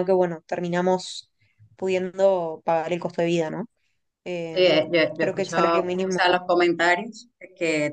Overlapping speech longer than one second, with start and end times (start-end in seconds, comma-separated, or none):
4.5-6.4